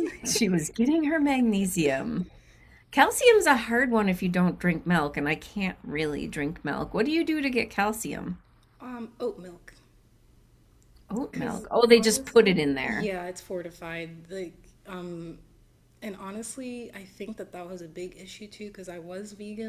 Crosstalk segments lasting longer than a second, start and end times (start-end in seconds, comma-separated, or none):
11.3-13.1